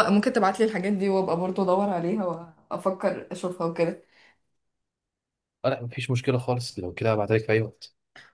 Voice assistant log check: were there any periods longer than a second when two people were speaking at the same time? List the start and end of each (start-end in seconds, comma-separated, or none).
none